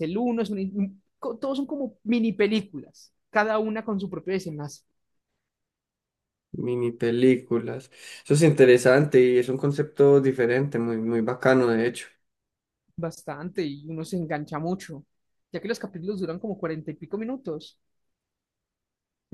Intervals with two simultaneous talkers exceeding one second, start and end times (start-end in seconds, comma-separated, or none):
none